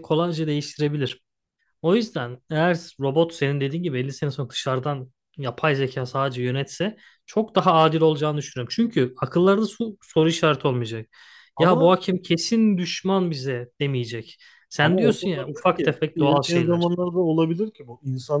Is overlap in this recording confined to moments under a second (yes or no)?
no